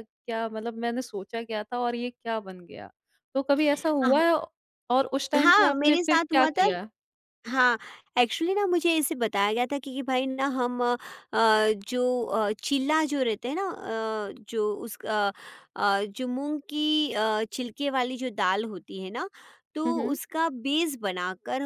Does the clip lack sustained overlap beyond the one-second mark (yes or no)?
no